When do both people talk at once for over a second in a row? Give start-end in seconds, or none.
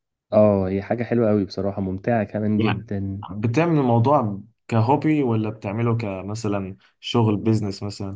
none